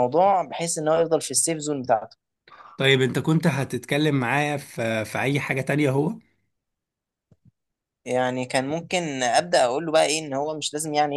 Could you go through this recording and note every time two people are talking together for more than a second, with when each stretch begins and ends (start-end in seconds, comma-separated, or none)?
none